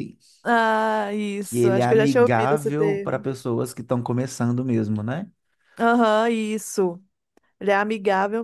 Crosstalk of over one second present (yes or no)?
yes